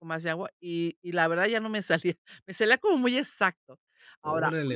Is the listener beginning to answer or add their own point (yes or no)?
no